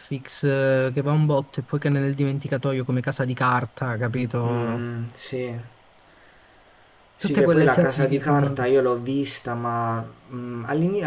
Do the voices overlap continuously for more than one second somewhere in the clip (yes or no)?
yes